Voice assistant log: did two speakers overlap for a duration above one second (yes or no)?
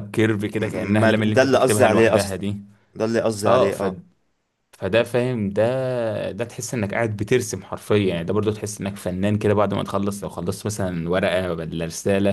yes